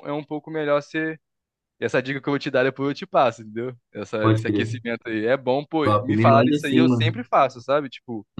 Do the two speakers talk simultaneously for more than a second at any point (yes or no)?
yes